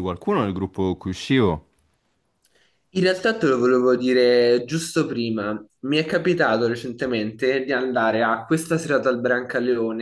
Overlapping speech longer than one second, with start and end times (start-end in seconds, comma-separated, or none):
none